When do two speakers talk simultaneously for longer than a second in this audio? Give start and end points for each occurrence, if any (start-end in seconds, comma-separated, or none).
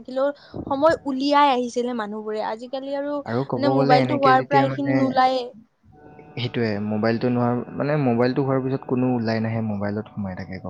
none